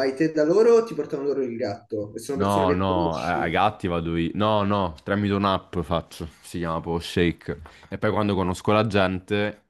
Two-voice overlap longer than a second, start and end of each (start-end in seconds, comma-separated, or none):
2.3-3.6